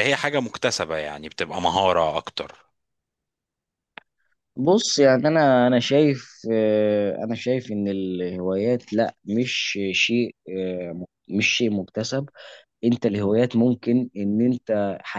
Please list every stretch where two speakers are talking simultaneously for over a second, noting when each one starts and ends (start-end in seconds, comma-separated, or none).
none